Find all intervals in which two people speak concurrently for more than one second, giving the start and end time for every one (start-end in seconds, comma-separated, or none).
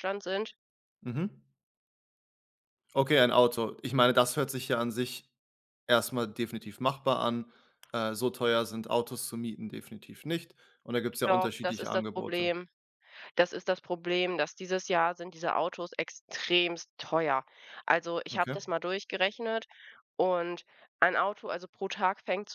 11.2-12.5